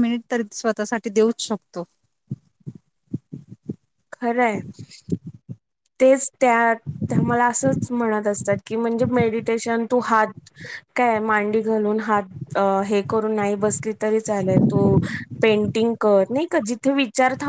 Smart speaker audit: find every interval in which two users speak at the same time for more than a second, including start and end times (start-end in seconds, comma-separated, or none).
none